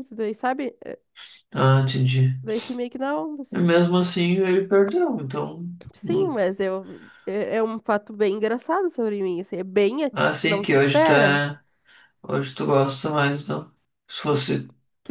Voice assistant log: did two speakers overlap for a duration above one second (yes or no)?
yes